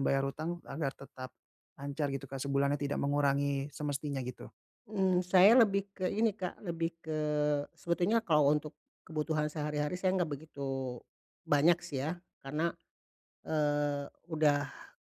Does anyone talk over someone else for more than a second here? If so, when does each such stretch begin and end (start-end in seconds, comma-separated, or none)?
none